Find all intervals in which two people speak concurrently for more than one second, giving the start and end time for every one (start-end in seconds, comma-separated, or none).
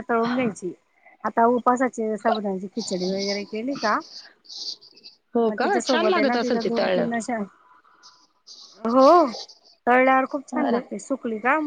5.5-7.3